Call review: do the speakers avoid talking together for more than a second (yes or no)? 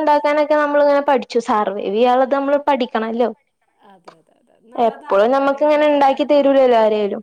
no